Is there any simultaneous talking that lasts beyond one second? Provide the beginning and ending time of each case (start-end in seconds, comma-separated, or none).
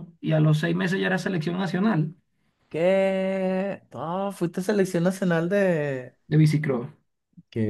none